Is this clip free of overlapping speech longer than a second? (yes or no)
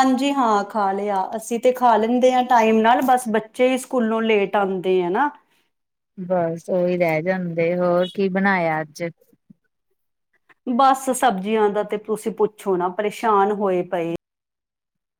yes